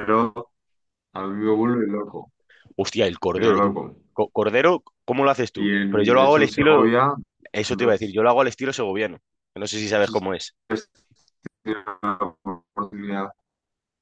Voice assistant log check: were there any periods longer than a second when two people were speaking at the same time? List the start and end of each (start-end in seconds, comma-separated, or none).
5.5-6.9